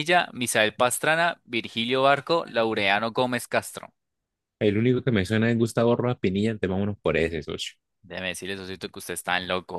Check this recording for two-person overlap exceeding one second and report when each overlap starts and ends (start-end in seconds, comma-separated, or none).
none